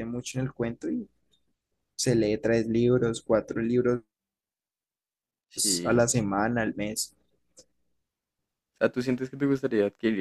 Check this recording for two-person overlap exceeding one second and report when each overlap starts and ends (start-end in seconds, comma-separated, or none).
none